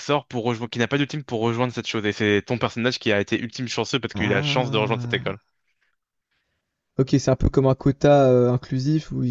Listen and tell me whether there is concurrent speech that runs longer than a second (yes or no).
yes